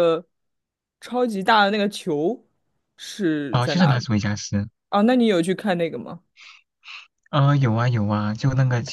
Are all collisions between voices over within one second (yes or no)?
yes